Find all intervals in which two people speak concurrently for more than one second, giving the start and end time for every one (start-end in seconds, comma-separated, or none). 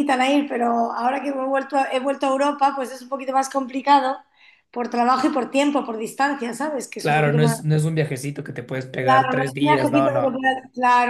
9.0-10.4